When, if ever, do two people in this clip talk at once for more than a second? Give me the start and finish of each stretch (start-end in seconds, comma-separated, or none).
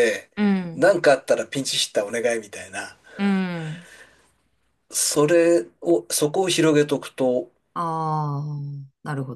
none